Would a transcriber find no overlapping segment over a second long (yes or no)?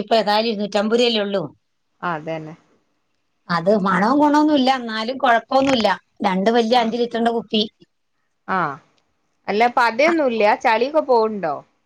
yes